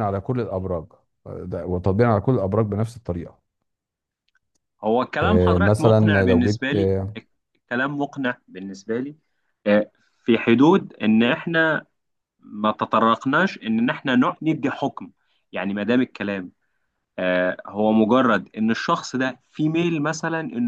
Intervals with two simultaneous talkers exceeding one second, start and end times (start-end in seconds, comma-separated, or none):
5.2-6.9